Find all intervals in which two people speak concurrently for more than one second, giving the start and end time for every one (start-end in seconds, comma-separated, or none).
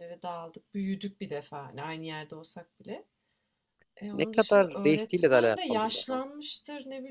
4.1-6.2